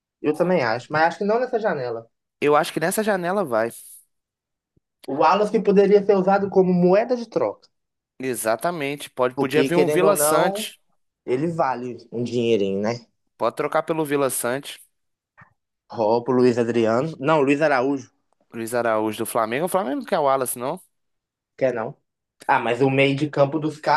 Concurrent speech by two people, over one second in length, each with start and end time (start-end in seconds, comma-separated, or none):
9.3-10.7